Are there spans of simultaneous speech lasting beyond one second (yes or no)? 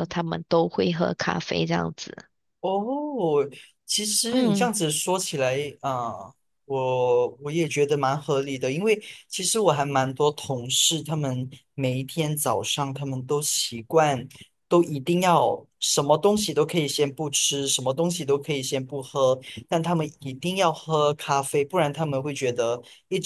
no